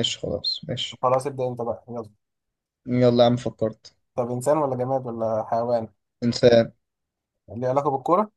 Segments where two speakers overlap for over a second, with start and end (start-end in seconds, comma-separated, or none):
none